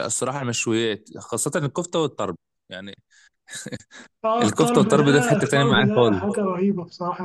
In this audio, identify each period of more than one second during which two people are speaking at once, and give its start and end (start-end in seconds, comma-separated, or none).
4.4-6.4